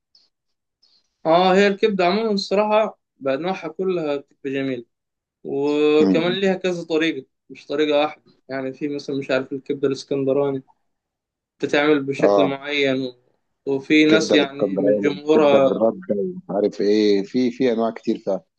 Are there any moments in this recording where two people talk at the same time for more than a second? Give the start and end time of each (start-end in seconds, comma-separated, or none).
14.1-15.8